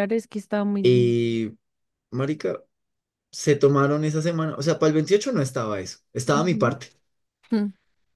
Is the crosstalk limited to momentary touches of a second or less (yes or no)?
yes